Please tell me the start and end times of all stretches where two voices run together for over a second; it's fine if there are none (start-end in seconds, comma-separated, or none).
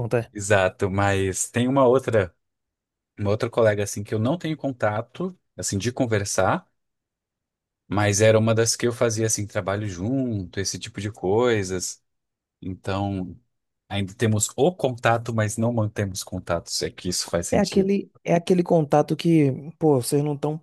none